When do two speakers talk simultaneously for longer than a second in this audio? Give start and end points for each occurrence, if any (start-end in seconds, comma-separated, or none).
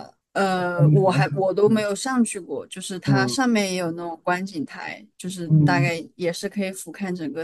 0.5-1.9